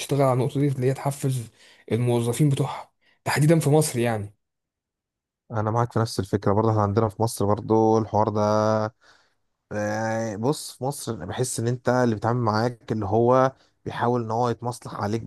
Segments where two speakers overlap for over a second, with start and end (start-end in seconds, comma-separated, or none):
none